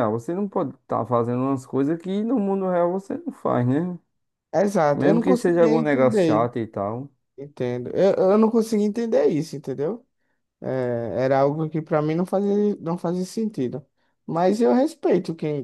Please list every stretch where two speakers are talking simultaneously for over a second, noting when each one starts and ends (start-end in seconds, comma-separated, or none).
4.9-6.5